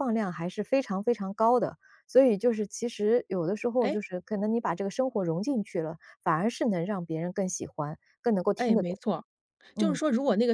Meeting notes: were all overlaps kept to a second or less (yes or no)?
yes